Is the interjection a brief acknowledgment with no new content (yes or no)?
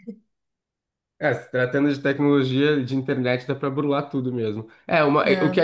yes